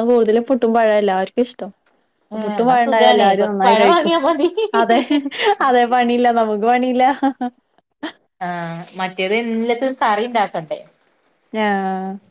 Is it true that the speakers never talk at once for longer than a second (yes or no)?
no